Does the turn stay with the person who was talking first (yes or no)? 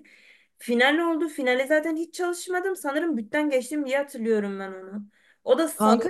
yes